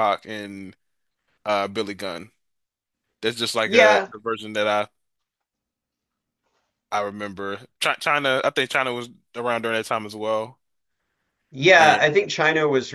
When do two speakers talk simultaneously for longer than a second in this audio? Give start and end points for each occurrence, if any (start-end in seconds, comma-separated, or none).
none